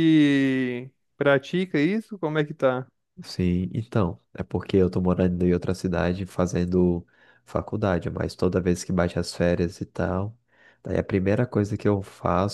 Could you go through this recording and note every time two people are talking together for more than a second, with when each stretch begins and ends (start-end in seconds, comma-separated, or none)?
none